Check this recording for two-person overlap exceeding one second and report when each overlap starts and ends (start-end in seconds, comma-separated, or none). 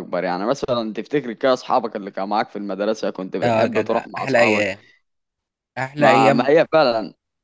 3.4-4.7